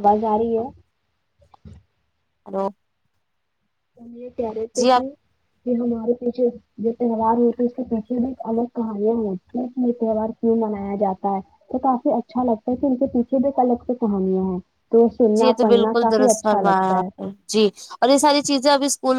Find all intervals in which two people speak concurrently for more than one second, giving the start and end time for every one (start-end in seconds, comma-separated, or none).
15.4-17.1